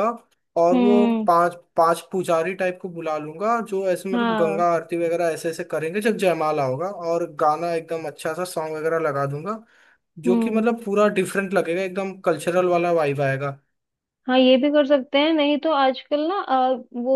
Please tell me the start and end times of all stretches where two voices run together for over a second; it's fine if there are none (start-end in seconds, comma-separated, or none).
none